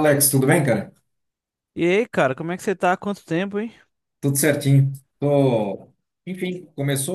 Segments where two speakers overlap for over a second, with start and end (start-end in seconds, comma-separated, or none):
none